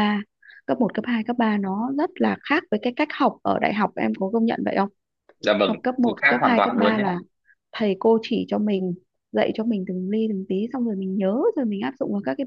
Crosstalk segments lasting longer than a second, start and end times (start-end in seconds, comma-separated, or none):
5.6-7.0